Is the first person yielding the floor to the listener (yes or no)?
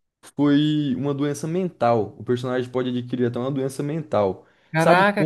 yes